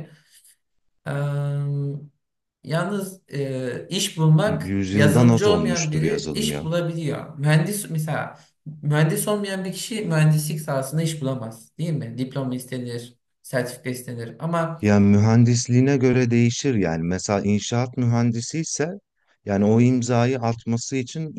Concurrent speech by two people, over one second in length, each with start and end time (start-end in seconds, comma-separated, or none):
4.5-6.7